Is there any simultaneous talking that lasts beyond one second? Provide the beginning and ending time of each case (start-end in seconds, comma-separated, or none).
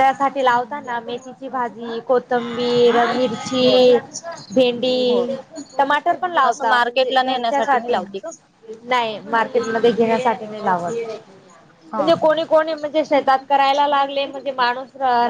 6.5-8.0